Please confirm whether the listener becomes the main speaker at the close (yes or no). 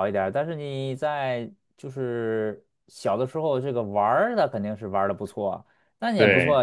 no